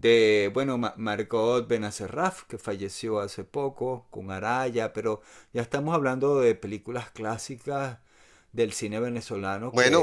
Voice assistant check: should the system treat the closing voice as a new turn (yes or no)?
yes